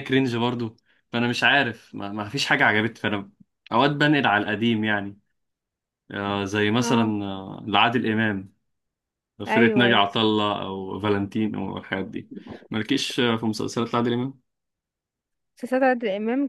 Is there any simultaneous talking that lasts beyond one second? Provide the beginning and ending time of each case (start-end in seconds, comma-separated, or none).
none